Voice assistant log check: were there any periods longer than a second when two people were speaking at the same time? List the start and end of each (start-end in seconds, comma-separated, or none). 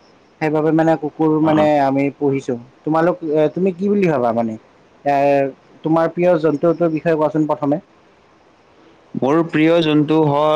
none